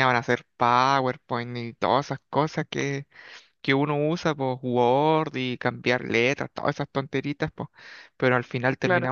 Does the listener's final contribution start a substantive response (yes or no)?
no